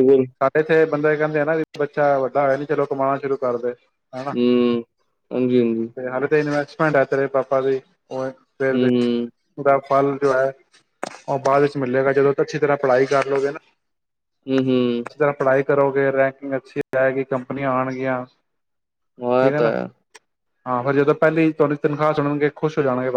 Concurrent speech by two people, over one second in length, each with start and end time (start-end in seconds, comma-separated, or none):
none